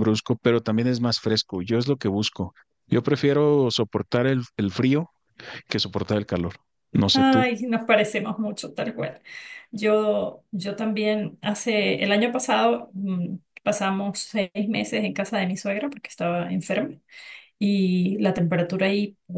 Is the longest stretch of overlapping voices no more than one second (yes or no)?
yes